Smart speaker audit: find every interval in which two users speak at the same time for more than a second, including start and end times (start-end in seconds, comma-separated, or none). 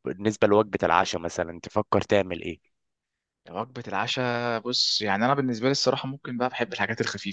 none